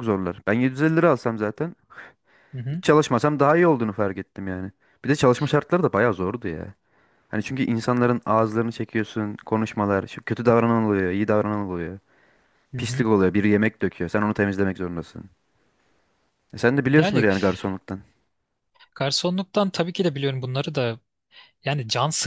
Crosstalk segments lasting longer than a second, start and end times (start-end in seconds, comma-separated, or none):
none